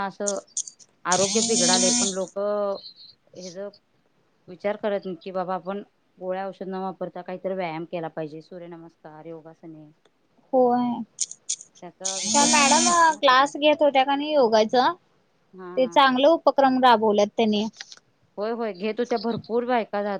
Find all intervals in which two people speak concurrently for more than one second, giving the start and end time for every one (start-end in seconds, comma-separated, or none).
12.0-13.5